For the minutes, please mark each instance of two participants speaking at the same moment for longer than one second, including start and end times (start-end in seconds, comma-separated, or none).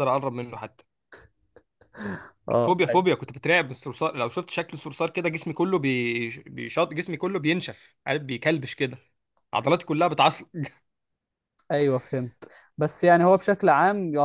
none